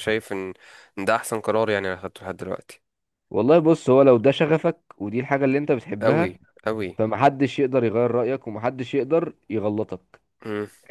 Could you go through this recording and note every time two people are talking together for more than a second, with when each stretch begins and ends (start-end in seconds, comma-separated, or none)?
none